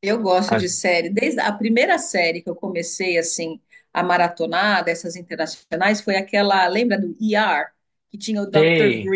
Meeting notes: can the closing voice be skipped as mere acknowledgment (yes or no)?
yes